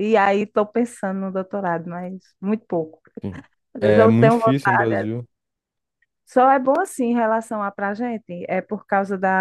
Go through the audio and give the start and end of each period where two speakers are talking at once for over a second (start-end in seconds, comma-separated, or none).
3.8-5.1